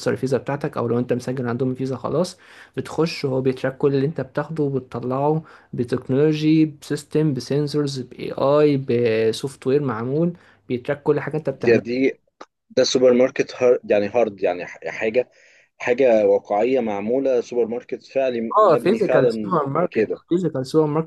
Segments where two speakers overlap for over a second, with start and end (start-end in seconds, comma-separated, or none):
18.6-20.2